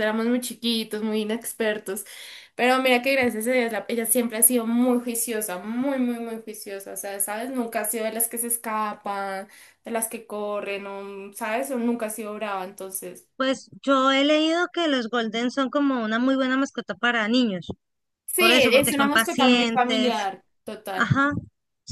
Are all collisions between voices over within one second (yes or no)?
no